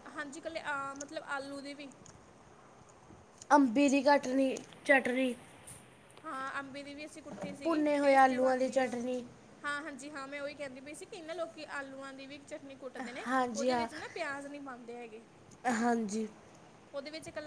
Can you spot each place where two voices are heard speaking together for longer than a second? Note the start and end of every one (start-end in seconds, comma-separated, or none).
7.6-8.9